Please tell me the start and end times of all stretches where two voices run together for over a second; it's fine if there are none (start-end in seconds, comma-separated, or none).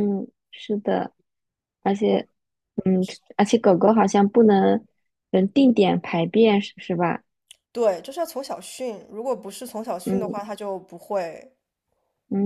none